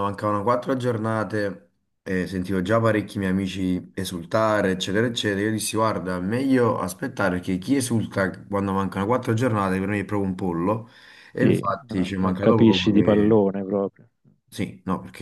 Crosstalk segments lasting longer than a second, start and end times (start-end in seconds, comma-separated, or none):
11.3-13.4